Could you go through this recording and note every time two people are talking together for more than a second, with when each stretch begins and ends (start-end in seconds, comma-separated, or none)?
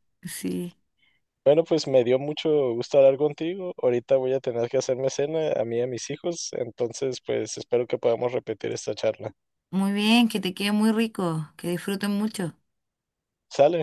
none